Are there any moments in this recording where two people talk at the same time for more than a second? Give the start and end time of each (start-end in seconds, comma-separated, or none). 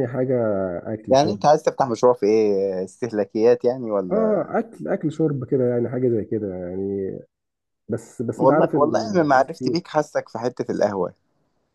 8.4-9.7